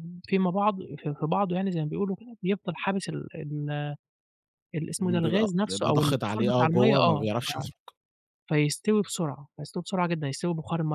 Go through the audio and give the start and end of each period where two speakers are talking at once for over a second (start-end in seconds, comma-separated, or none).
5.0-7.3